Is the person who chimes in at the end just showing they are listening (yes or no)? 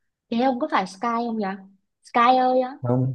no